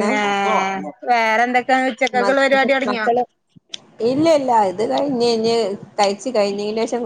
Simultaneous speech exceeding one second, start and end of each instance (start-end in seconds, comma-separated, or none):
none